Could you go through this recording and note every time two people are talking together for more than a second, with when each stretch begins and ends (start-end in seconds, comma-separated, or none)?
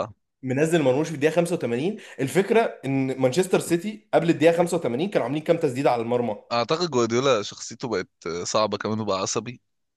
none